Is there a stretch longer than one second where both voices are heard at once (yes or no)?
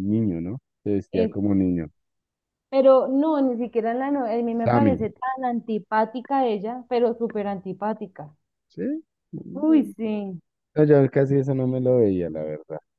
no